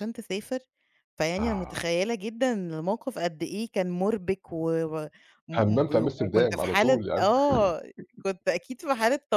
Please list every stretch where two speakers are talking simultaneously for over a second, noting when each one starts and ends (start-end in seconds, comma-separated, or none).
5.5-7.3